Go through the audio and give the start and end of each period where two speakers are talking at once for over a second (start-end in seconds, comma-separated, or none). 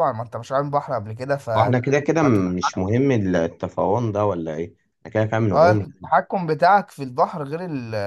none